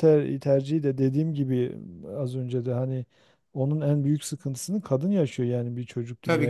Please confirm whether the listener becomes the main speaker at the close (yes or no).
no